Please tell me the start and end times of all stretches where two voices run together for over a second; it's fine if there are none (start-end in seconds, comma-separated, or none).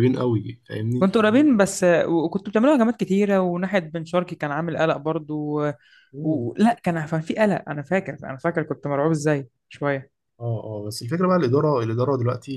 none